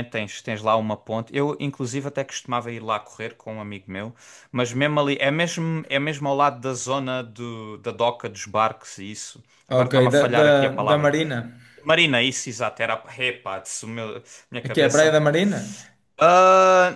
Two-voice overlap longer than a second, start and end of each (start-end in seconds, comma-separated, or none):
9.7-11.1